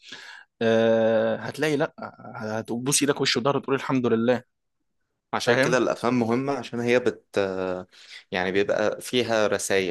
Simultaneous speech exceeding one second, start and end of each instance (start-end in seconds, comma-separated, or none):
none